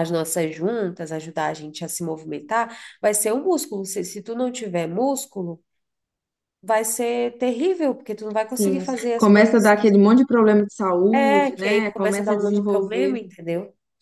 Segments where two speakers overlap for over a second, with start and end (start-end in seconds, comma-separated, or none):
8.5-10.0, 11.1-13.2